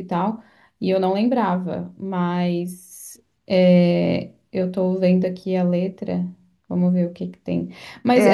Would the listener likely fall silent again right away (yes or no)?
no